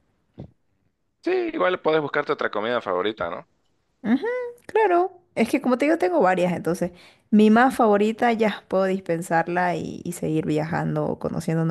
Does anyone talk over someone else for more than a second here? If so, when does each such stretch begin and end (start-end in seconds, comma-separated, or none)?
none